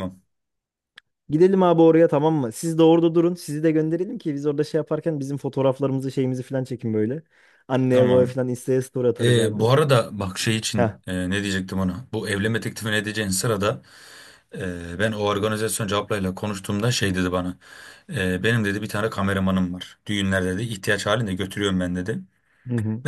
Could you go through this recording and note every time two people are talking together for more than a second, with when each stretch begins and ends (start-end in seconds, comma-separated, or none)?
none